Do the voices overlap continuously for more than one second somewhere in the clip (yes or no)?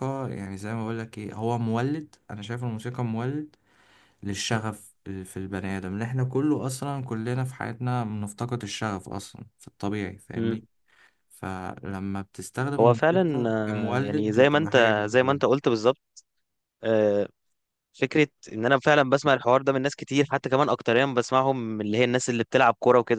yes